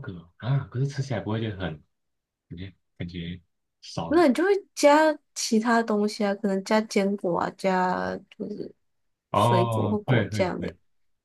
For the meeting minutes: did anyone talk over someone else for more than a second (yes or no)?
yes